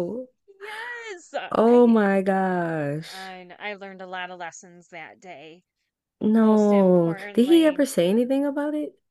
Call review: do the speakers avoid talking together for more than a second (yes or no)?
no